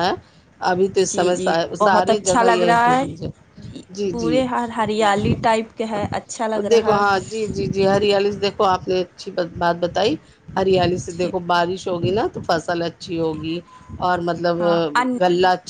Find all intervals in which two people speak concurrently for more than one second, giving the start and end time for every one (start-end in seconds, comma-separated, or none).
1.1-2.9